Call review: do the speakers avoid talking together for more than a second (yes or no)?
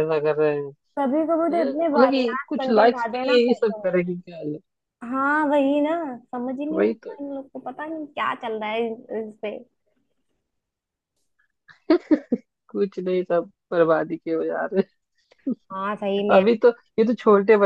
no